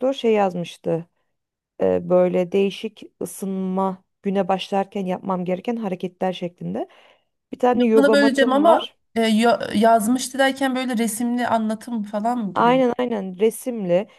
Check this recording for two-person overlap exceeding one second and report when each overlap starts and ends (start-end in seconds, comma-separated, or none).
7.8-9.0